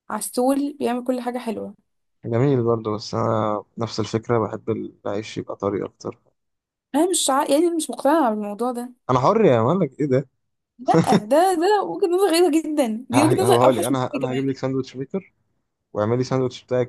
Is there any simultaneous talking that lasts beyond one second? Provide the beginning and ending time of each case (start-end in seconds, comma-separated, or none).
13.1-14.6